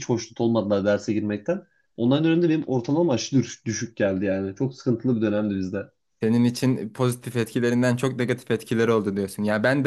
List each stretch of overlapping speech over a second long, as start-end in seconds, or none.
none